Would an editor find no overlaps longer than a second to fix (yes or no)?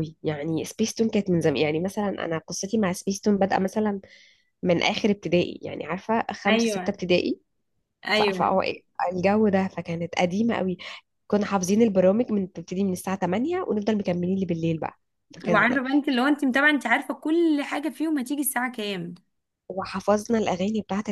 yes